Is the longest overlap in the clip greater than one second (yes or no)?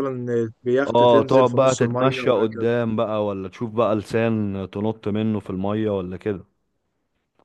yes